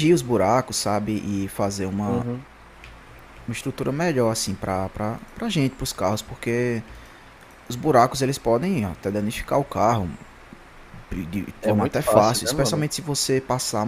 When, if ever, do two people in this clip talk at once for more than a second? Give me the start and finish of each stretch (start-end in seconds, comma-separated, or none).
11.6-12.8